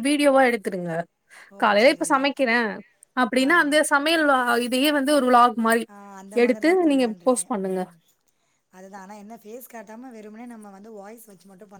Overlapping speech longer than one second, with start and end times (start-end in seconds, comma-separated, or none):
none